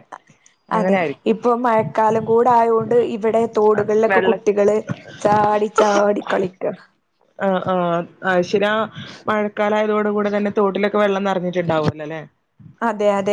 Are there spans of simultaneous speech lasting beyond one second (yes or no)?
no